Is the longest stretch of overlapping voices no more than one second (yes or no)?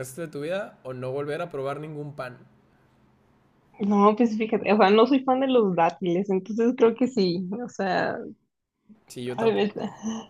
yes